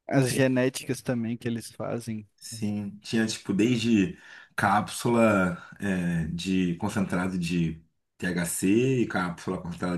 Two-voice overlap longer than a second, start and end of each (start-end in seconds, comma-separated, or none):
none